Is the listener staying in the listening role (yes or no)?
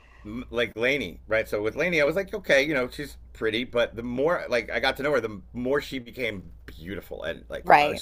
yes